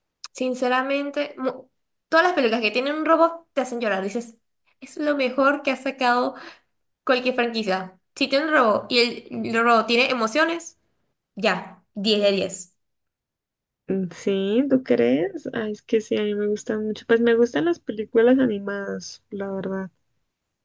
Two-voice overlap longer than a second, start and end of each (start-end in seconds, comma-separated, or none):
none